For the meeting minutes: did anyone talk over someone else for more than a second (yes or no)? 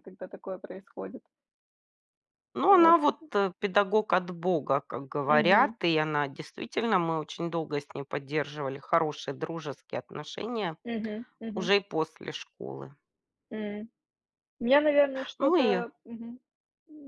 no